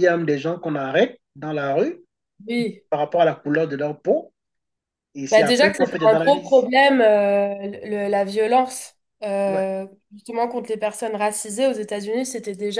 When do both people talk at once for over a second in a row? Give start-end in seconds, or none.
5.3-6.7